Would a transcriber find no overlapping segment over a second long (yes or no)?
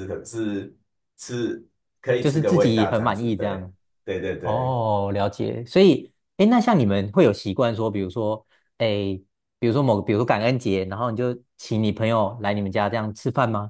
no